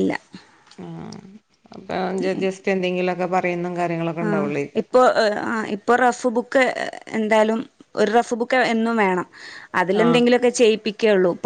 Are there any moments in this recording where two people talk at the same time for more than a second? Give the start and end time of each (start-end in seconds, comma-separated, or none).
none